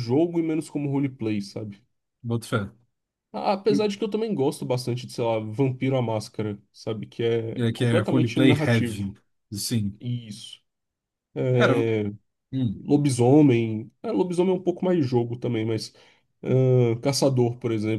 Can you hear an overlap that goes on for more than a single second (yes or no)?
yes